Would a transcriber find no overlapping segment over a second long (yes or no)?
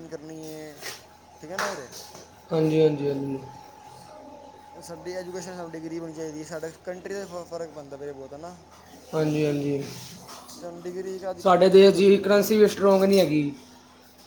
no